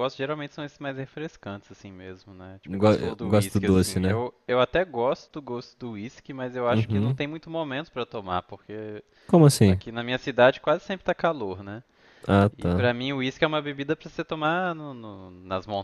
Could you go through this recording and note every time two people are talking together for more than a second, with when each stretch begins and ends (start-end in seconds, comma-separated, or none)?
2.7-4.2